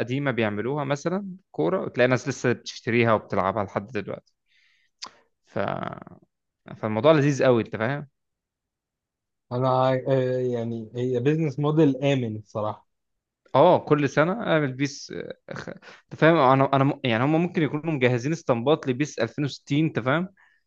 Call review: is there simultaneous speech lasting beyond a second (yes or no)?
no